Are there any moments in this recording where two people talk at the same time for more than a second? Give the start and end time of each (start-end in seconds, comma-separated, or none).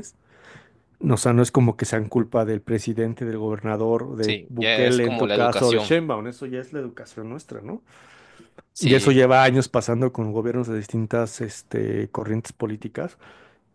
4.2-5.9